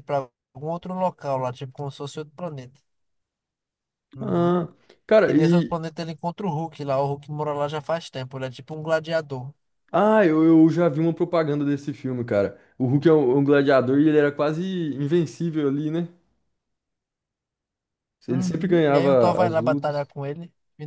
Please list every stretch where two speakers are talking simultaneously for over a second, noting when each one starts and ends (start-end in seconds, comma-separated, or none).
18.3-20.0